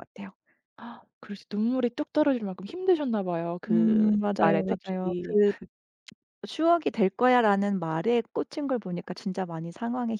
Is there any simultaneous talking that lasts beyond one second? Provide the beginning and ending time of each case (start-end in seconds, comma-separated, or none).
3.7-5.3